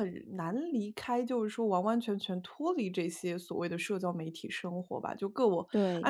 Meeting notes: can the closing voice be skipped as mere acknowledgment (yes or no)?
yes